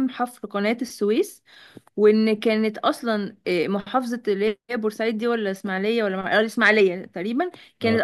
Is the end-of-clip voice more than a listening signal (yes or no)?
no